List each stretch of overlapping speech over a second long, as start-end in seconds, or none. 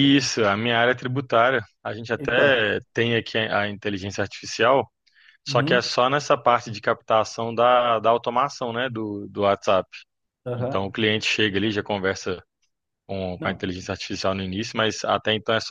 none